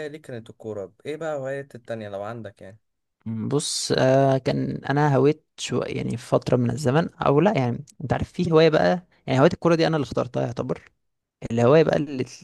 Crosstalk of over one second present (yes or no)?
no